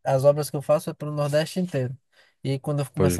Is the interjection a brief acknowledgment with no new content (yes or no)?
yes